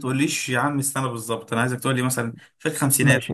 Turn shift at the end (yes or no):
yes